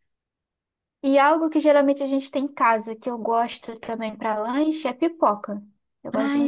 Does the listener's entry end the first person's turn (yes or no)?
yes